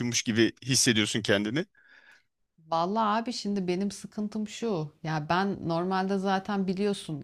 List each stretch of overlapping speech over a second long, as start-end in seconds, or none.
none